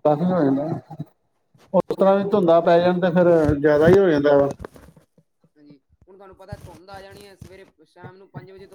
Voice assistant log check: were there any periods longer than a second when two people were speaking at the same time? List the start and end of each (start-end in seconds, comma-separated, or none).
none